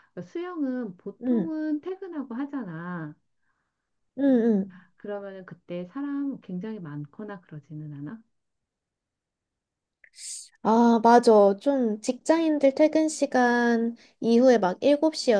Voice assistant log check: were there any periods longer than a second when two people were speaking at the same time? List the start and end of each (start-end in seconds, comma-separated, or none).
none